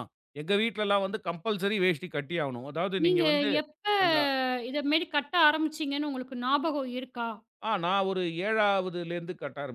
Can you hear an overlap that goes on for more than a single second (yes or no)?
no